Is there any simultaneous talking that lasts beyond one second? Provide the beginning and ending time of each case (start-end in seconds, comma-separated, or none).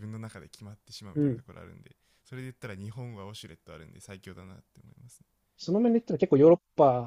none